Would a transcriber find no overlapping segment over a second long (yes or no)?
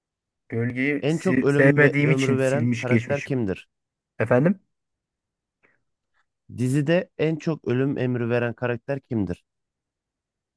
no